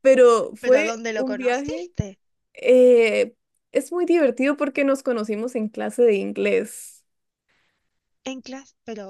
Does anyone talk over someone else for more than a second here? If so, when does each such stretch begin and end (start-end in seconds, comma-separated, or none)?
0.6-1.9